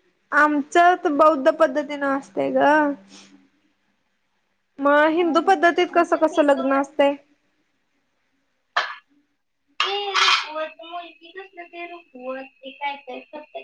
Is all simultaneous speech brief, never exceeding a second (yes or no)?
no